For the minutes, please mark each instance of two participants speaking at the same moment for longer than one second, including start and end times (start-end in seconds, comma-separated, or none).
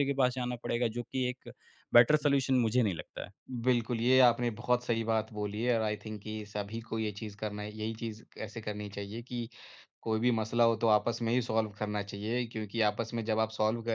none